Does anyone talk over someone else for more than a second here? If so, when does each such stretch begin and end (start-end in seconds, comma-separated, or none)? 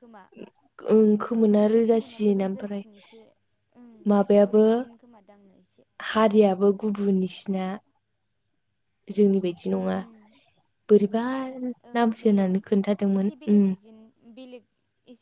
1.3-2.8